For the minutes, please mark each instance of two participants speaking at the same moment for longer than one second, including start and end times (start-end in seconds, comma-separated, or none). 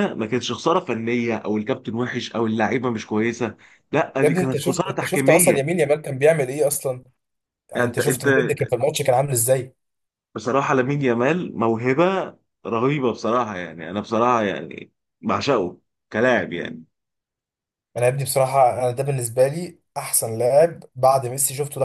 4.2-5.7